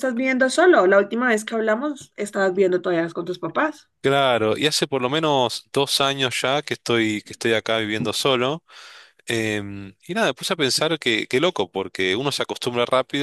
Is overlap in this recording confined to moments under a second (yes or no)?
yes